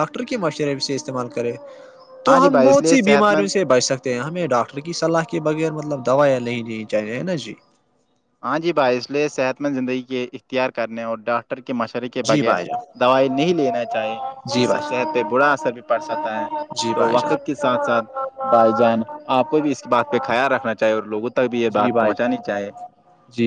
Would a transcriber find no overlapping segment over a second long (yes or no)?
no